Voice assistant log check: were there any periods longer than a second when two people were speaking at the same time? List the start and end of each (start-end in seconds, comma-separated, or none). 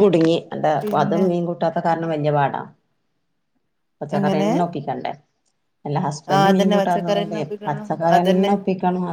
6.3-8.5